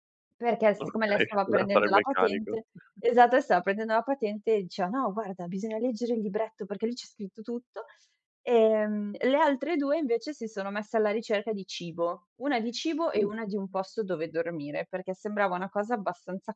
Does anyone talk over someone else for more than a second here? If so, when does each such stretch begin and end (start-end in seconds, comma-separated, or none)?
0.8-2.6